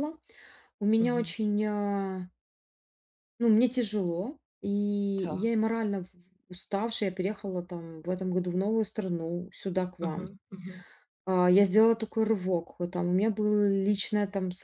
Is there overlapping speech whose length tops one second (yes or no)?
no